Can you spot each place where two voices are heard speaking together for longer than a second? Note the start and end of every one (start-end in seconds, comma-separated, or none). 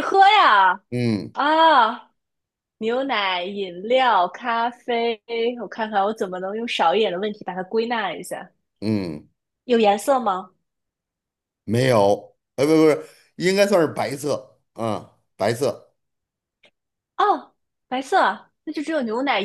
none